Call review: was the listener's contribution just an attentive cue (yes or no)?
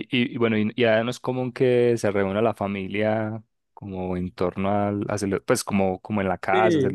no